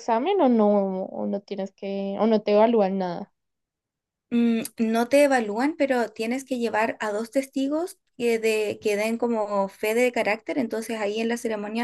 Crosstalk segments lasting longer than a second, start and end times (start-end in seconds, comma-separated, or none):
none